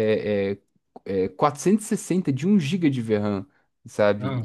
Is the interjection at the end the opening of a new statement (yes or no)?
no